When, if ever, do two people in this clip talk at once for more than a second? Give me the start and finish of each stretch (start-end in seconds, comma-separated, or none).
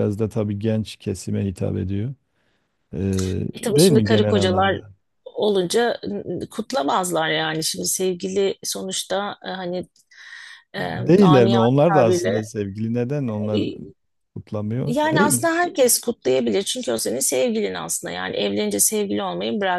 3.5-4.8, 10.8-12.5